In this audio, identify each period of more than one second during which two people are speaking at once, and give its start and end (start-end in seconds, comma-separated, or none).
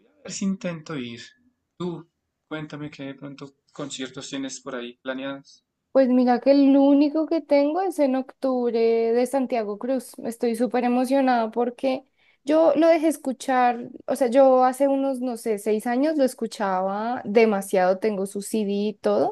none